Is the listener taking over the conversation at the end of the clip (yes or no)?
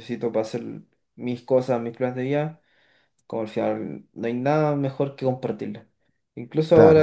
no